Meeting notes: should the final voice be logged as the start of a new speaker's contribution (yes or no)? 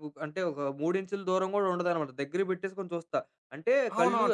yes